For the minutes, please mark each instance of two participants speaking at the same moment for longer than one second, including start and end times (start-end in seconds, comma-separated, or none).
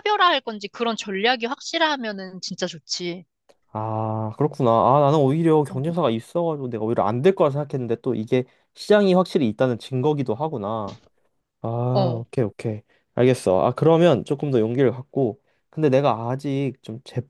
none